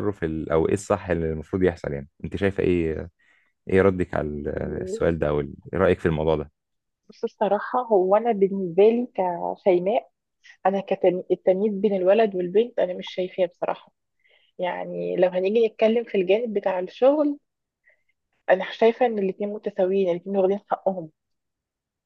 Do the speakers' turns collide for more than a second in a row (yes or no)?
no